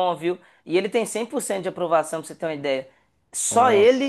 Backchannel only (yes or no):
yes